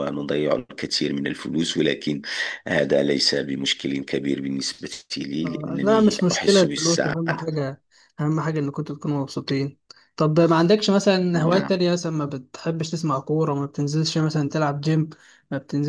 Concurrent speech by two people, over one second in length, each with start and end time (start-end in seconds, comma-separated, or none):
5.4-7.5